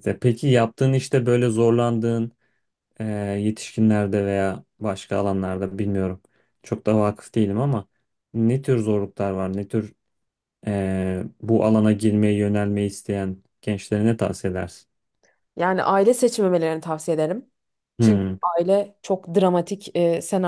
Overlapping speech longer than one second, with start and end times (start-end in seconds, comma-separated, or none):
none